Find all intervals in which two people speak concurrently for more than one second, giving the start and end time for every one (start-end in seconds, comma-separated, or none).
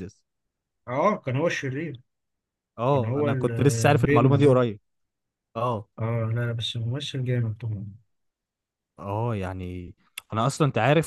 2.9-4.6